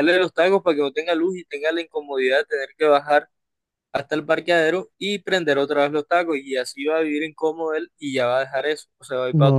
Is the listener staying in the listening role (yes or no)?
no